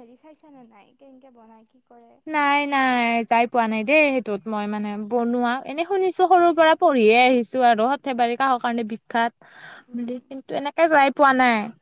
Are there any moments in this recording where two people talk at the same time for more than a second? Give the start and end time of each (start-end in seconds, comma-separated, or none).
none